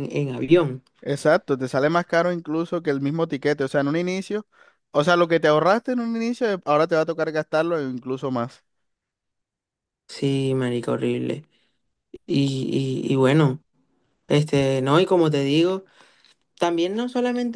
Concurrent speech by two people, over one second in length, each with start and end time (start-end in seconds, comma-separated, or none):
none